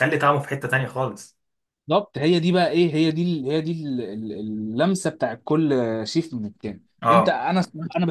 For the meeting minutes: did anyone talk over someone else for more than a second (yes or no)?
no